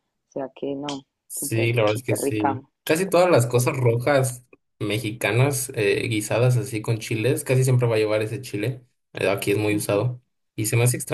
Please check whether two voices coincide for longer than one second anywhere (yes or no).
yes